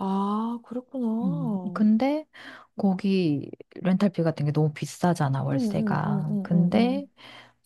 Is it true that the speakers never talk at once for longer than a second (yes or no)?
no